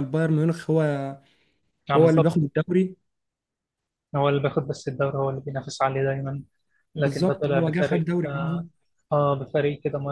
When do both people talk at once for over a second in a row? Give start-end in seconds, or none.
7.0-8.7